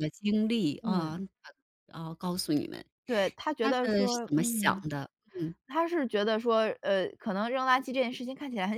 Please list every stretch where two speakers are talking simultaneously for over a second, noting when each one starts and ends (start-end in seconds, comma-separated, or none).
3.6-4.8